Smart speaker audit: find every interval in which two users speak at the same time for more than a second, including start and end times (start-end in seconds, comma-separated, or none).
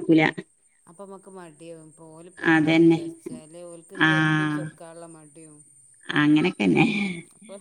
none